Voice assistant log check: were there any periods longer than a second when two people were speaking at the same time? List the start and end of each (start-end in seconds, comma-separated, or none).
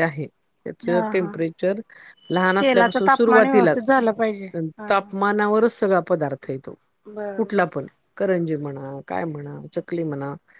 2.6-3.9